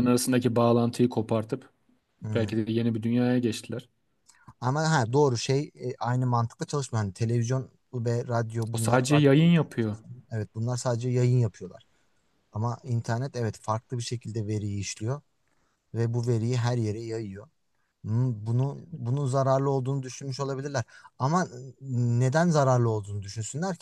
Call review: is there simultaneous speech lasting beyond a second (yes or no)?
no